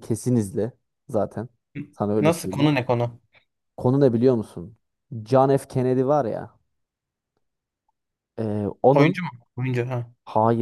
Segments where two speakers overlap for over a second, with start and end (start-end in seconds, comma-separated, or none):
none